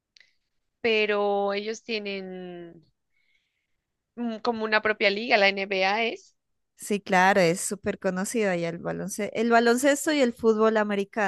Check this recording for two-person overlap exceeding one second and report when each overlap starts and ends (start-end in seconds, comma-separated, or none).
none